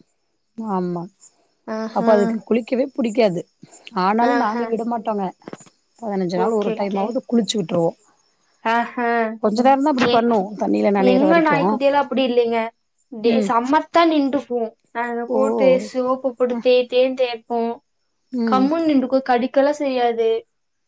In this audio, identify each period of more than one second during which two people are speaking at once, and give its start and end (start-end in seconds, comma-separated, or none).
none